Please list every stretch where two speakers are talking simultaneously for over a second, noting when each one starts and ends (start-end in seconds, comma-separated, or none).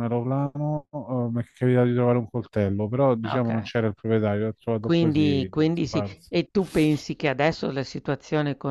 4.8-6.3